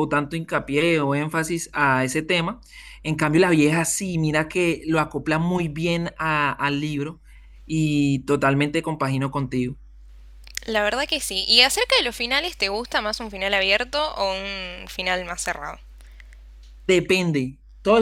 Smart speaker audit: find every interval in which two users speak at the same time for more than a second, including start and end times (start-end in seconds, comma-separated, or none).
none